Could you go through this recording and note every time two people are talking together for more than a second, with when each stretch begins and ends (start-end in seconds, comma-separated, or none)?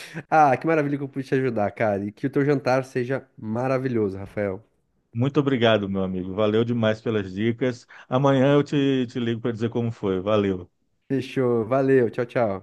none